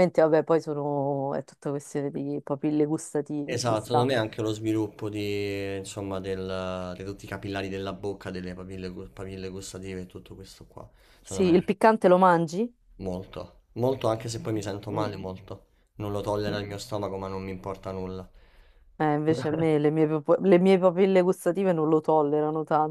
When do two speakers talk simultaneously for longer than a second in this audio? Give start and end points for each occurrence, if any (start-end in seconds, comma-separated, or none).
none